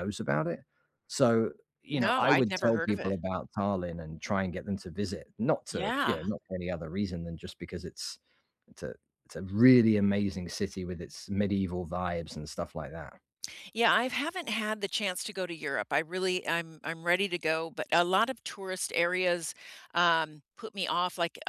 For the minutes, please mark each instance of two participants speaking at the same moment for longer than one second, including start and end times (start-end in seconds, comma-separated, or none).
1.9-3.2